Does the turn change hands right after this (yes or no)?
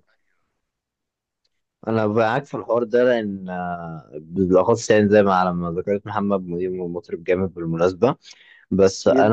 no